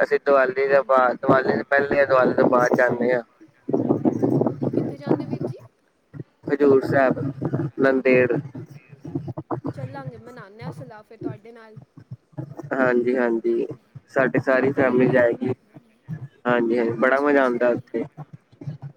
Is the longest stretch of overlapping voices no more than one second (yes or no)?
no